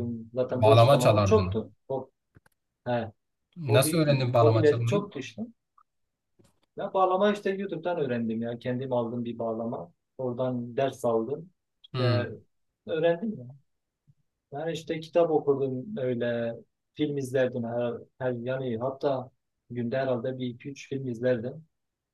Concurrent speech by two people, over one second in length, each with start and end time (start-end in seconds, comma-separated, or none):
0.5-1.7, 3.7-5.1